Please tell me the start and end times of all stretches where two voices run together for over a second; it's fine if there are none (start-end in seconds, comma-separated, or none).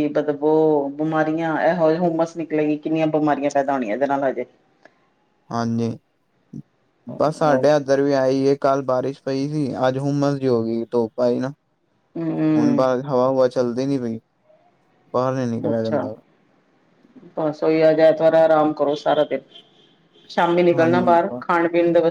none